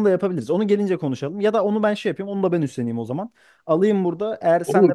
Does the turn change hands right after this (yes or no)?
yes